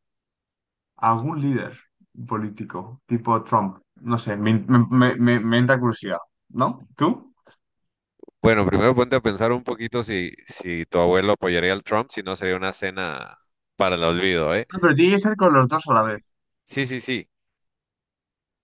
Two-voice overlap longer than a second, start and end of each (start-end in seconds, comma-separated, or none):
none